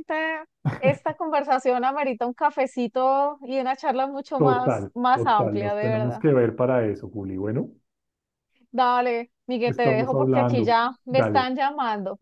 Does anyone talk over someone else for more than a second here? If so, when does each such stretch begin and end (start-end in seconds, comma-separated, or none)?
4.4-6.2, 9.7-11.5